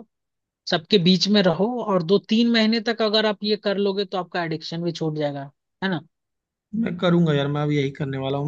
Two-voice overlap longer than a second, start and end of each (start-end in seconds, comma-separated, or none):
none